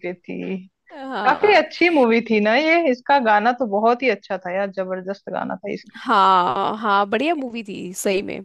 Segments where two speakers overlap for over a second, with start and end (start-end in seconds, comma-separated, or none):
none